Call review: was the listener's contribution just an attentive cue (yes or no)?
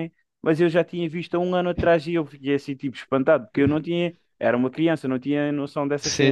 yes